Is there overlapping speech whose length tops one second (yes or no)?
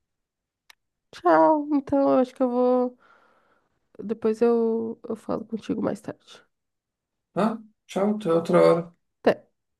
no